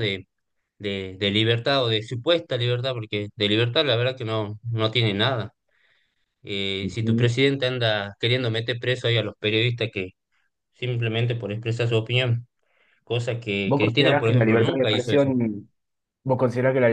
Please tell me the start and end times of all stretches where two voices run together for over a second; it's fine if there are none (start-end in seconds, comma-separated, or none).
13.6-15.3